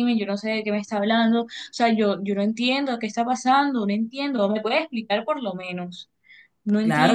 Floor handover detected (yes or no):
yes